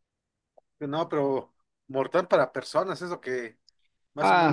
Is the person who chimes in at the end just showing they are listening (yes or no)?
no